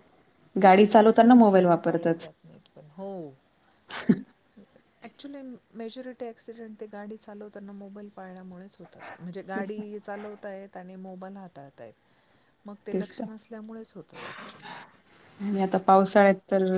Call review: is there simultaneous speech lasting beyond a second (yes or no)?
yes